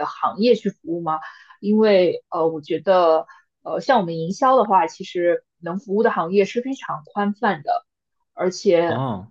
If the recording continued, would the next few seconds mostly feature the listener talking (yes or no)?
no